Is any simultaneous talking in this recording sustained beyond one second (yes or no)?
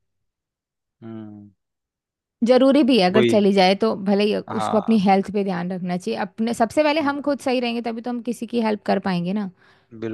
no